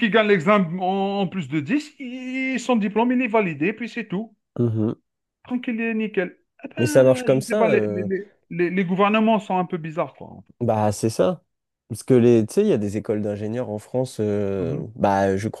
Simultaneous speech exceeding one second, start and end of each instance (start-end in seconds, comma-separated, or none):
6.8-8.1